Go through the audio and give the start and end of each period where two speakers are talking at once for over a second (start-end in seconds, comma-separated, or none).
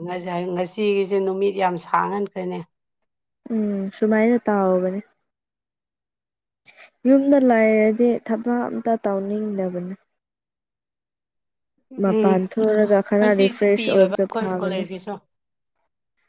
13.2-14.8